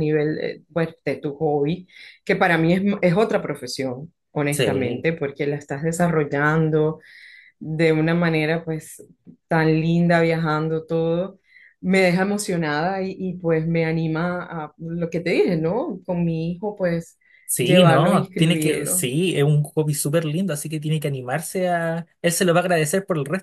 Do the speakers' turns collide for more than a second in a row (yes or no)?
yes